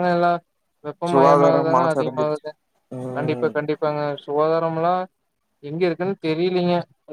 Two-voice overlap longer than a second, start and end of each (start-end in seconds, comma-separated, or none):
1.1-2.4